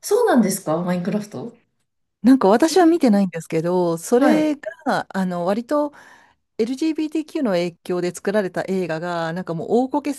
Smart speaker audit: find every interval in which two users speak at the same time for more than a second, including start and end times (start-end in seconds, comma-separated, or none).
none